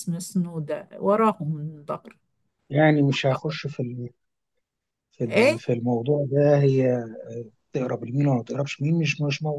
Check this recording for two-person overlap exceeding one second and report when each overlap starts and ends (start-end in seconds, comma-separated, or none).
none